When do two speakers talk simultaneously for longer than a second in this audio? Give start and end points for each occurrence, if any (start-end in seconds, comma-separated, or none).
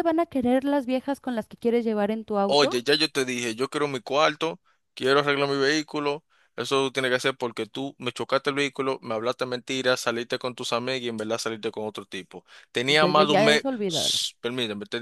12.9-14.2